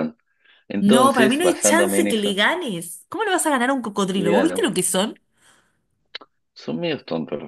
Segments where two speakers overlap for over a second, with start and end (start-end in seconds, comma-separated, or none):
0.8-2.4